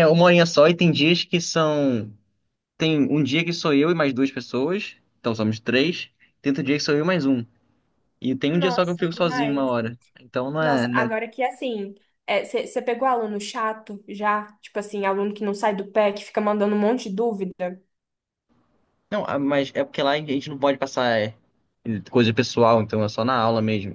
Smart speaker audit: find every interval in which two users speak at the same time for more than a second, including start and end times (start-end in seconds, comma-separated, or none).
8.5-9.7